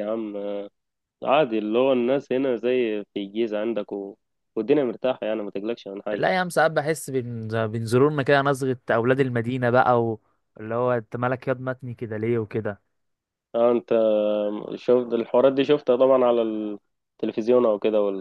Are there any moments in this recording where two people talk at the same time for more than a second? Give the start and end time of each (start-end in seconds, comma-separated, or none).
none